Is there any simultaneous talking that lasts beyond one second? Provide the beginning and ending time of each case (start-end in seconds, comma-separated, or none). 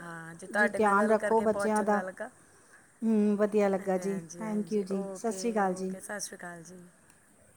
0.6-2.0, 3.8-5.9